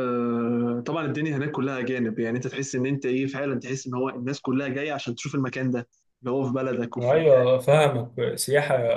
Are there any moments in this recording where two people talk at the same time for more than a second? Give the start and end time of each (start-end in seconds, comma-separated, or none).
none